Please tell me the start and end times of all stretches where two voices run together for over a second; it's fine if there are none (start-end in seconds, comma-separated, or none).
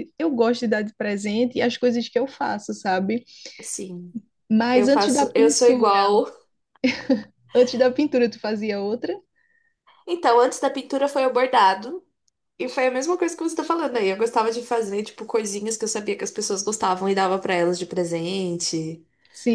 4.7-6.1